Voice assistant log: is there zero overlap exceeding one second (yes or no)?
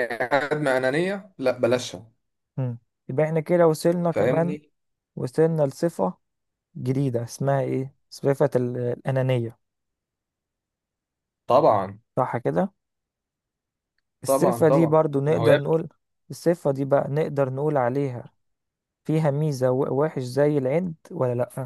no